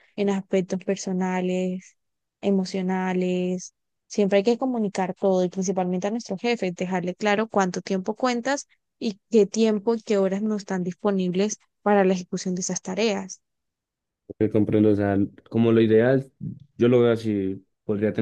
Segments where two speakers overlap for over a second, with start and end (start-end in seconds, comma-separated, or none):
none